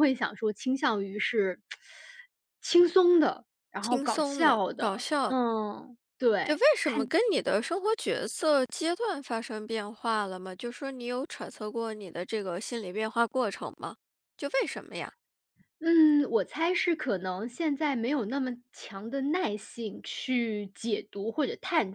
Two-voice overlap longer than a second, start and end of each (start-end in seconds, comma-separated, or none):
3.8-5.3